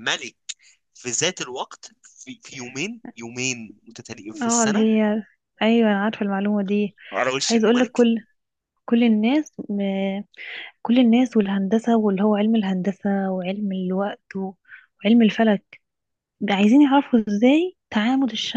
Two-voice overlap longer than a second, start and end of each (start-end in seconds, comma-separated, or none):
none